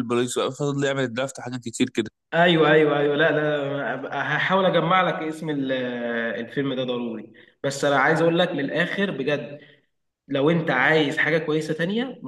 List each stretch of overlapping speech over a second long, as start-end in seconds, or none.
none